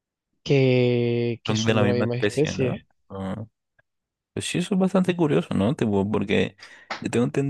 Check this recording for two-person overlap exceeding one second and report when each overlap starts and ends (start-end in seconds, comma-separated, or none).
1.4-2.9